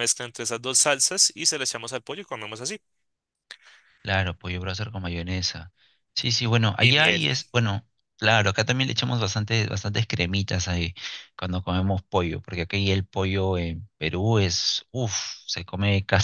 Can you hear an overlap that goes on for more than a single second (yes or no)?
no